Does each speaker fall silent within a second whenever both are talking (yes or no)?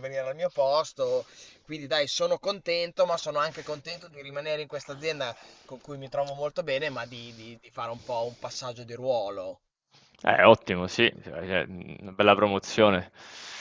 yes